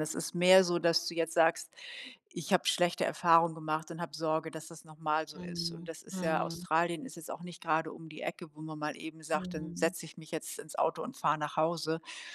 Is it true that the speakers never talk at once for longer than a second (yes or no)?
no